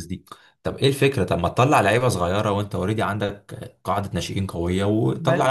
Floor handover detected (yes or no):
yes